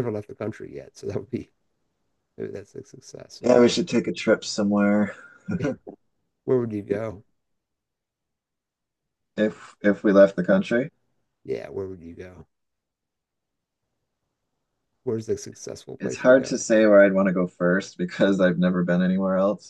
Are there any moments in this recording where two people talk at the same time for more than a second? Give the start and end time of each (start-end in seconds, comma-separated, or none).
none